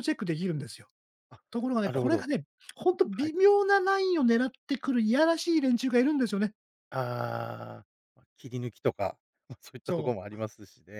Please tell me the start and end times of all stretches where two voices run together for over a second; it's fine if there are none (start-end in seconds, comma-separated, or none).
none